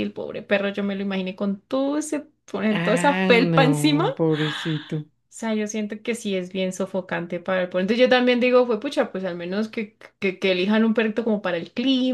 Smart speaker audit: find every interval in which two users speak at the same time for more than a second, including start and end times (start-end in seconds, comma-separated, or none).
2.8-4.1